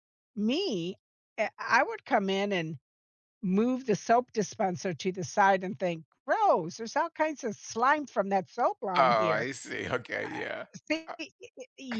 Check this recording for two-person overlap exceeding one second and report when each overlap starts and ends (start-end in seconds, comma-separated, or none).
none